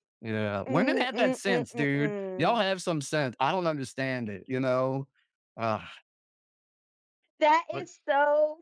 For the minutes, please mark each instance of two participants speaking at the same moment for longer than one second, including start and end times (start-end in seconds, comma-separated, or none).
0.7-2.6